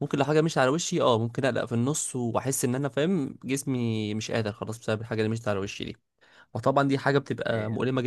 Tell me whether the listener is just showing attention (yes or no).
yes